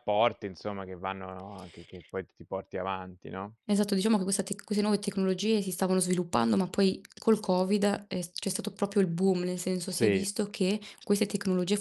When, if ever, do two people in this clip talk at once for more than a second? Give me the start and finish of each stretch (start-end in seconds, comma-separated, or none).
none